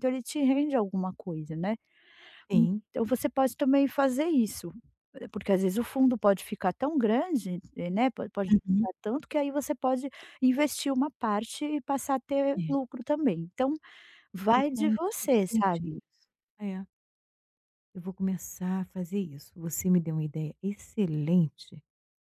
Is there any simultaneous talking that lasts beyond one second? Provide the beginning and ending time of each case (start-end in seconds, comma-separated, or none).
14.5-15.9